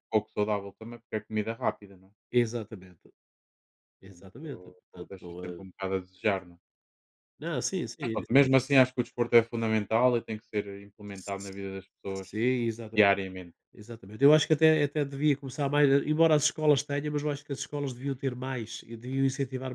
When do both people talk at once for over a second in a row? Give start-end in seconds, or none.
4.0-5.6